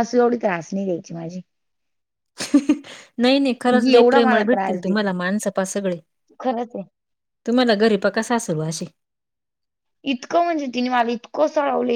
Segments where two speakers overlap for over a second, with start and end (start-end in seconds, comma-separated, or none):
3.7-5.1